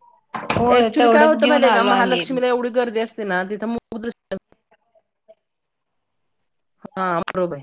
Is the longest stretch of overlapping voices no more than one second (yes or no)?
no